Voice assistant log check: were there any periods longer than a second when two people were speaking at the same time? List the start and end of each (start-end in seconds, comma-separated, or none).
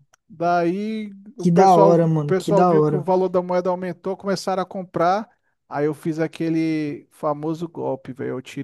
1.4-3.1